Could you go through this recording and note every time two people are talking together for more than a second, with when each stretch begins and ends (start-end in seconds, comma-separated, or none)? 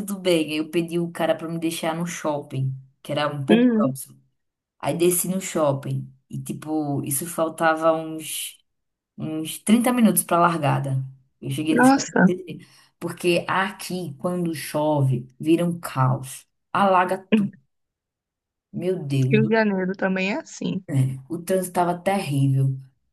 none